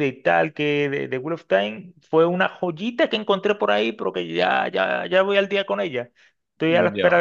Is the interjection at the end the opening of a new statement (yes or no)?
no